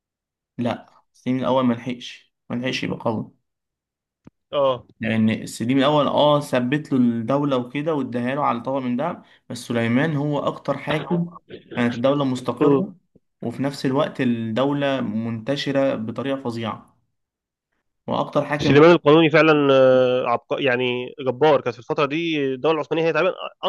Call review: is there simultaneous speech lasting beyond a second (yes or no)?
no